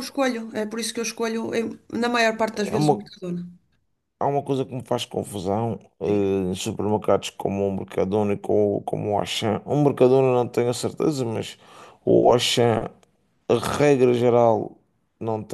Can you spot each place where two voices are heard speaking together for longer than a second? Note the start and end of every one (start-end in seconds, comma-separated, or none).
none